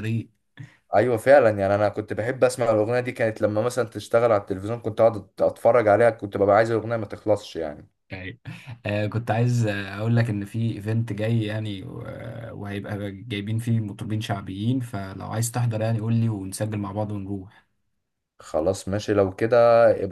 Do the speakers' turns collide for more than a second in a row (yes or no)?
no